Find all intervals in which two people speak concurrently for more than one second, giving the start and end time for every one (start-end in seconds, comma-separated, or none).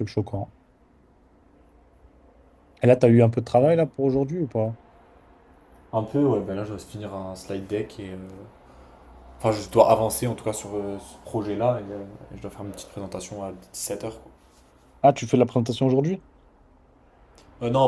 none